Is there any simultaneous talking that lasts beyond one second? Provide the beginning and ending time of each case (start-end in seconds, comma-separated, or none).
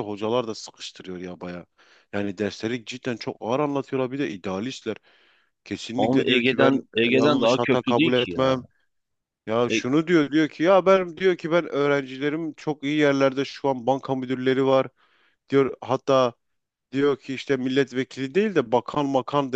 6.0-8.6